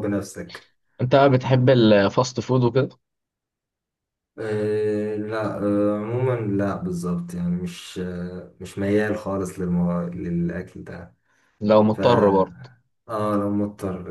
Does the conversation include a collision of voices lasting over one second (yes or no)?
no